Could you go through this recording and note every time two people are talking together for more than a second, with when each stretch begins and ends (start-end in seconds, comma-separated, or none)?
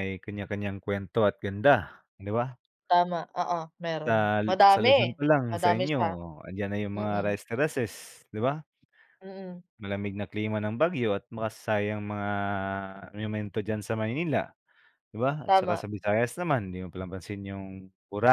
4.0-6.0